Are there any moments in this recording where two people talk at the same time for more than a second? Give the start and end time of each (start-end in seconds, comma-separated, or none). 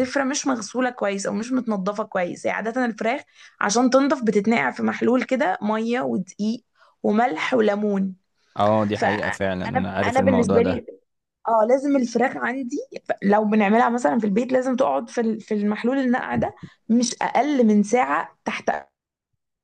8.9-10.8